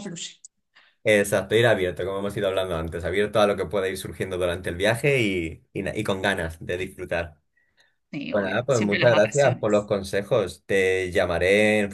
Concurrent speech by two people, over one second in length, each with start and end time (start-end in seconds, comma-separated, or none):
8.3-9.9